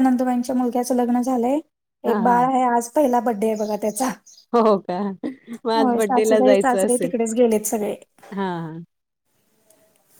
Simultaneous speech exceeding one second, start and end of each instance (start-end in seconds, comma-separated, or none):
5.8-7.1